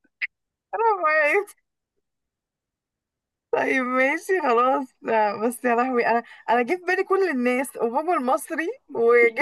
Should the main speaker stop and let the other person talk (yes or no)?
yes